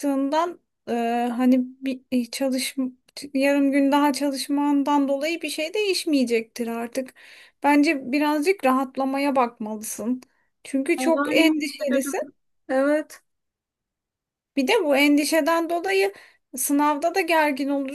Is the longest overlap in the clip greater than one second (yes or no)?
yes